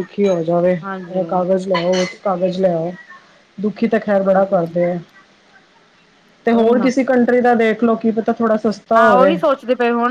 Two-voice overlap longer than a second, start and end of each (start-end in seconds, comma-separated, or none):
none